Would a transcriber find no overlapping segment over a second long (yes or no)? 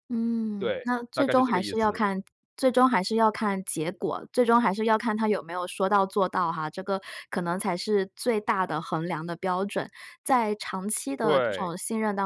no